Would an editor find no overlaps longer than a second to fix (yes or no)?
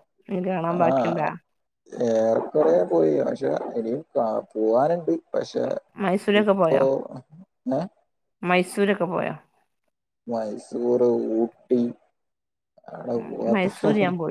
yes